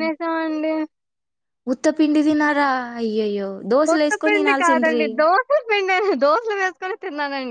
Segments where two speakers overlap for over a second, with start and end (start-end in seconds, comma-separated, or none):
3.9-5.0